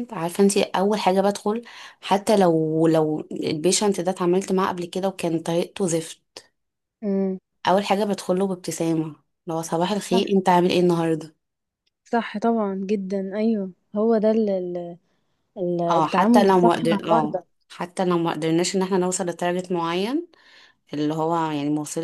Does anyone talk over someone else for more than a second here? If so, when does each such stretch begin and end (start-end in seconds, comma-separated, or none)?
16.0-17.4